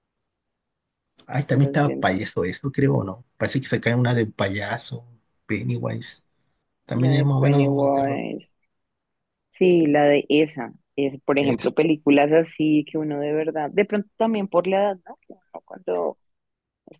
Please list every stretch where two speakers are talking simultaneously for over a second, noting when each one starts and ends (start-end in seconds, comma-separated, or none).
6.9-8.2